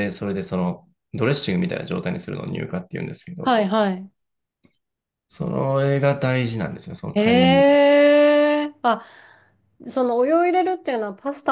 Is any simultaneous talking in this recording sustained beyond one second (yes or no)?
no